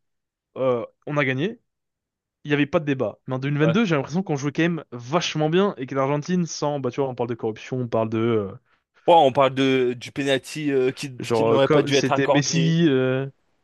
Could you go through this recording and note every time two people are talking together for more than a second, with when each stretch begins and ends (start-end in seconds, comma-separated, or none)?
11.2-12.8